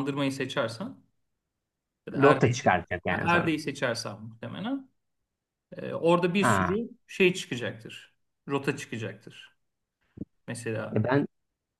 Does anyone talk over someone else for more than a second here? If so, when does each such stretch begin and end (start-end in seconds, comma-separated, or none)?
2.1-3.5